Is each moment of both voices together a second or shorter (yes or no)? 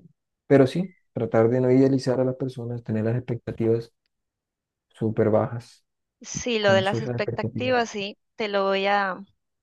no